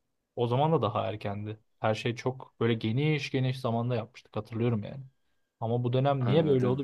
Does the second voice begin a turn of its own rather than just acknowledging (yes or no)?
no